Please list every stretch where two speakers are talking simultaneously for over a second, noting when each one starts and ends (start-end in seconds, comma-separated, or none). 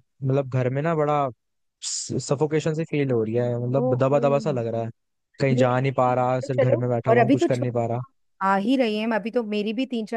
5.5-8.0